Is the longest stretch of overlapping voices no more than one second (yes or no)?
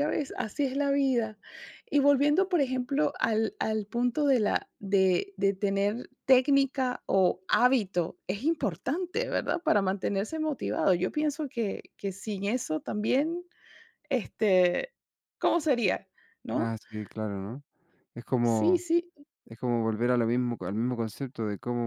yes